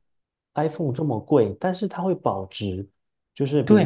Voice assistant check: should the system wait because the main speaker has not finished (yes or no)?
no